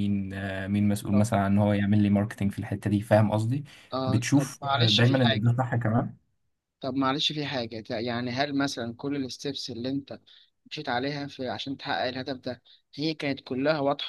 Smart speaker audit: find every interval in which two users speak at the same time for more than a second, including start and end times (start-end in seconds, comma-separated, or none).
4.1-5.4